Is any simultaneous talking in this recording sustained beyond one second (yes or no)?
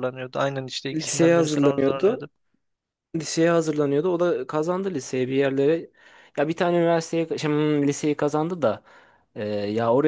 yes